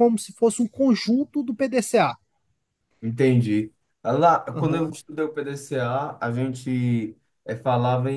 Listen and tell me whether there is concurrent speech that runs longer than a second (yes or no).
no